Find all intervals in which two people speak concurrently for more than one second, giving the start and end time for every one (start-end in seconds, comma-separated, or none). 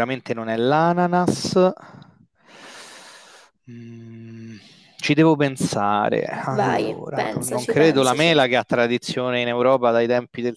6.6-8.3